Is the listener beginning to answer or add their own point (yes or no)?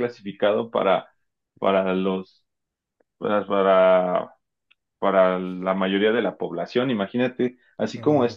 no